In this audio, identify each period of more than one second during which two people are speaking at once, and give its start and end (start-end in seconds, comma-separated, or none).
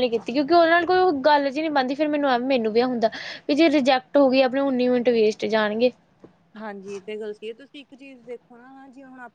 none